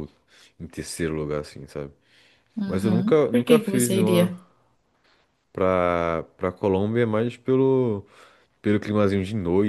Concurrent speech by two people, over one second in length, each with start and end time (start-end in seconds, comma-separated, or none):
2.7-4.3